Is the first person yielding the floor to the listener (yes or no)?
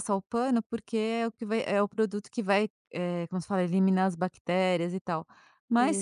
no